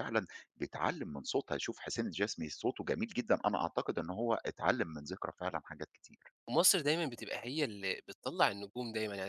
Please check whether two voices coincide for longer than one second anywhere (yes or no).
no